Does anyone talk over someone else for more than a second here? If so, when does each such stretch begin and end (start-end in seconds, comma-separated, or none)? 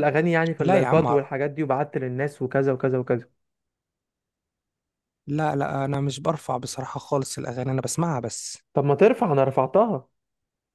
none